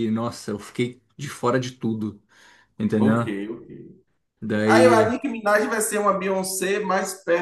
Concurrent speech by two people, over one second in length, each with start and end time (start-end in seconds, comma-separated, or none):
none